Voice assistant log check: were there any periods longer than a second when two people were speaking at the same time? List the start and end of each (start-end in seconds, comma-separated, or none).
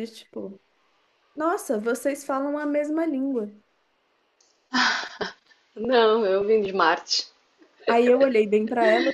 none